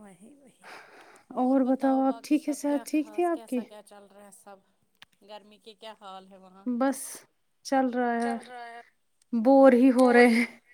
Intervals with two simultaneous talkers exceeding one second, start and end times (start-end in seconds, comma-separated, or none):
2.1-3.6